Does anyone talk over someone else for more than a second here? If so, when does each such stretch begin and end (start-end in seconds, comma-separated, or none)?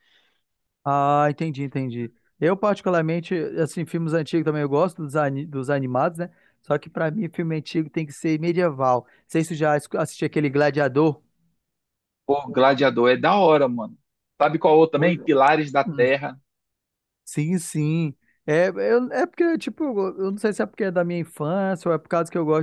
none